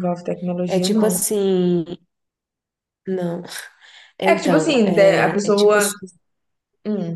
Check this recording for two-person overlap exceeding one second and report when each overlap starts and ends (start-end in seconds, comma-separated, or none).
4.3-5.9